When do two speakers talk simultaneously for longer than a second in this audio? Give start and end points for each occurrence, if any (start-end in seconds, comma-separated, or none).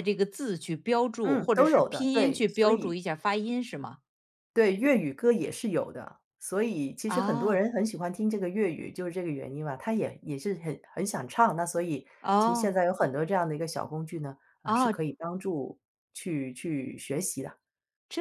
1.2-3.0